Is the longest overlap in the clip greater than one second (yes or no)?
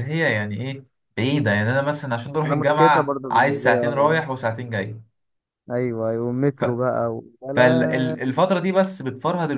yes